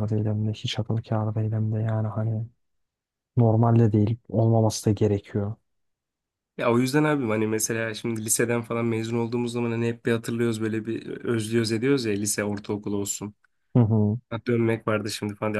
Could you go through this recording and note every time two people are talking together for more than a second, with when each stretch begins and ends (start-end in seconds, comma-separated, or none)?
none